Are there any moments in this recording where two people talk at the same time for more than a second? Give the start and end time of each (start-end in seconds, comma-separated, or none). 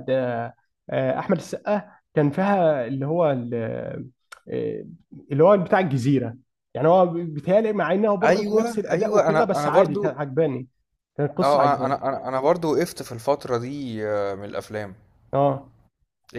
8.2-10.2